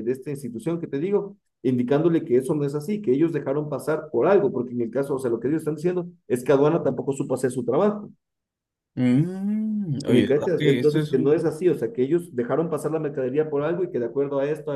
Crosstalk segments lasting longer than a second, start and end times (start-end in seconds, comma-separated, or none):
10.1-11.3